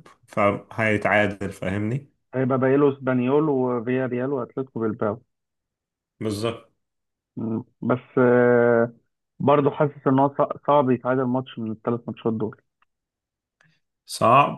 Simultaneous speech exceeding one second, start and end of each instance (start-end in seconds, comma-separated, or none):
none